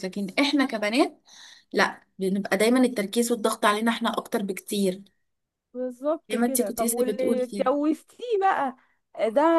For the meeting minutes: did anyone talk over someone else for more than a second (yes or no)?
yes